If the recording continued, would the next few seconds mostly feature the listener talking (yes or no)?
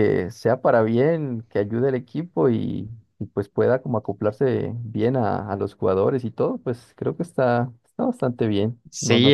yes